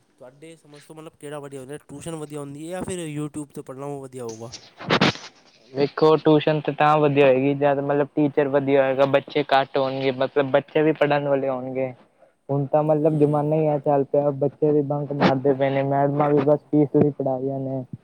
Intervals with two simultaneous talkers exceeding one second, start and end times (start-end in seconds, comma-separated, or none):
none